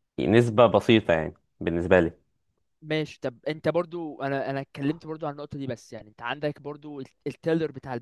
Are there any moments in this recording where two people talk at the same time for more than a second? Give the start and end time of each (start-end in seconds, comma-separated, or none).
none